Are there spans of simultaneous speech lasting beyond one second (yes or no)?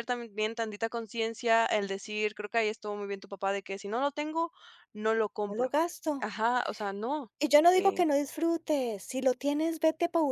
no